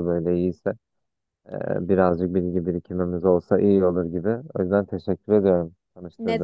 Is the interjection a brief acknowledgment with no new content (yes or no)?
no